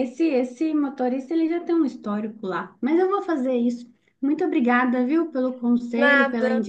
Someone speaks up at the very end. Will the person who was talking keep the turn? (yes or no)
yes